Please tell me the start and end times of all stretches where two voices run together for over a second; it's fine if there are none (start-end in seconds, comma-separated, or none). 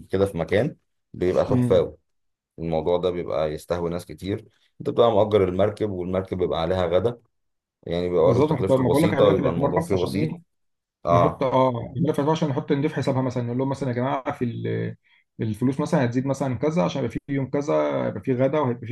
8.2-10.3